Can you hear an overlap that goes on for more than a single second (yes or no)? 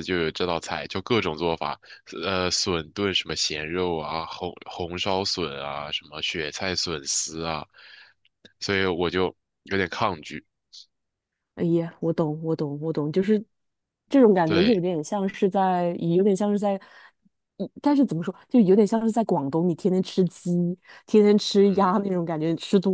no